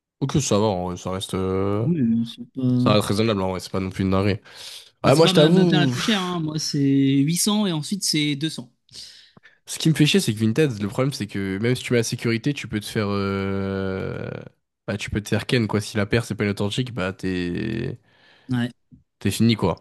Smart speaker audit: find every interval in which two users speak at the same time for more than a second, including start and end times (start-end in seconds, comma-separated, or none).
5.0-6.4